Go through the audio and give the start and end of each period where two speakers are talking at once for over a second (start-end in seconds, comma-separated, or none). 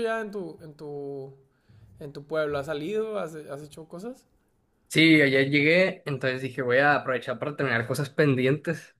none